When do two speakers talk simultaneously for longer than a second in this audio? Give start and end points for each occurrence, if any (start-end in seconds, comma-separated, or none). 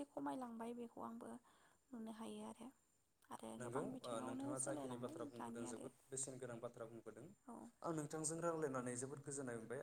3.6-5.8